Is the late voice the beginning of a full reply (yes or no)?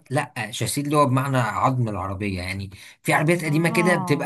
no